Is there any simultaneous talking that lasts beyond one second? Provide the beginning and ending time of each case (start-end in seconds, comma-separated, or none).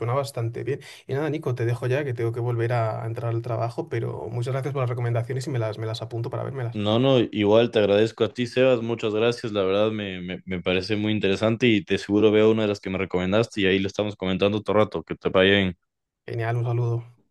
none